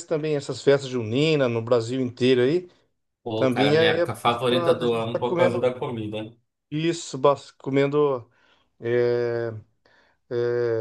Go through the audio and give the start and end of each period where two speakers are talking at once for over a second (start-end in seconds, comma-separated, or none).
3.3-5.7